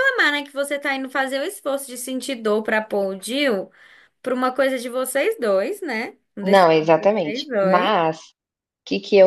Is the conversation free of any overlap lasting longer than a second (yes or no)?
no